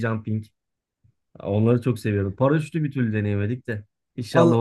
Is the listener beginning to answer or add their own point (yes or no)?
yes